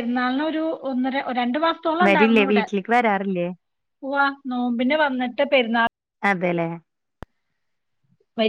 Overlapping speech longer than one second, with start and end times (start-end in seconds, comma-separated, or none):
none